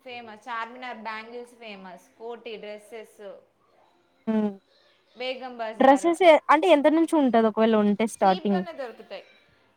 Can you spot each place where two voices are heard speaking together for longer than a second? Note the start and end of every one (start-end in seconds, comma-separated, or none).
none